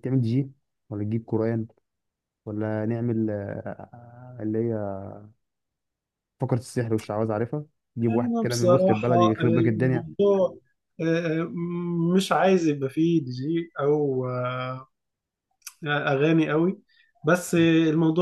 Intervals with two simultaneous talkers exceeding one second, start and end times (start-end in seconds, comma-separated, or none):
8.0-10.1